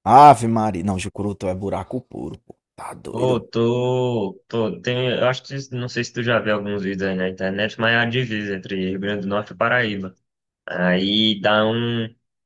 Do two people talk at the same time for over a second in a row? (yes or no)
no